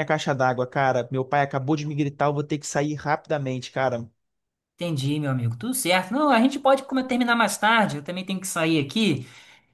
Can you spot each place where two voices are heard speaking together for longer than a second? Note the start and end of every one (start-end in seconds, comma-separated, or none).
none